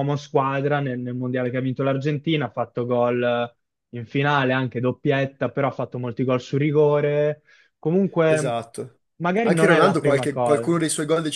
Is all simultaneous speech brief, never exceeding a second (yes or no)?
no